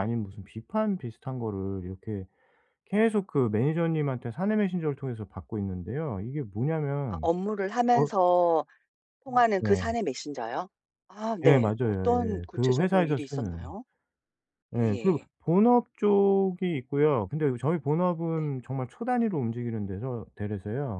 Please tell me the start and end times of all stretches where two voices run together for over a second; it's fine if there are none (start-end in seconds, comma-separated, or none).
11.4-13.7